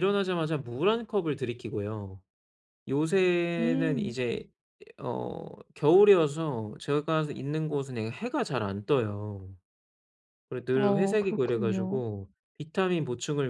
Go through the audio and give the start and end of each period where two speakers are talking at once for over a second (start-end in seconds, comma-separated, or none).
10.7-12.0